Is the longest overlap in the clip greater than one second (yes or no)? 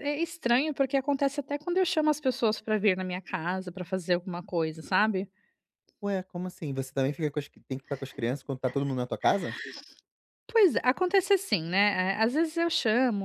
no